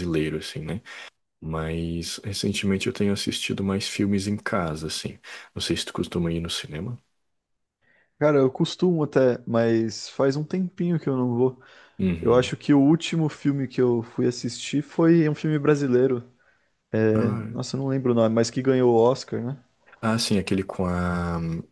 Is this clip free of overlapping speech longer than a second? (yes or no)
yes